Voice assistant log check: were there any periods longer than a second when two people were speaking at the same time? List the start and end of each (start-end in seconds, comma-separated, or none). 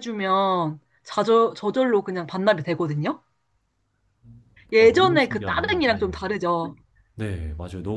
4.8-6.1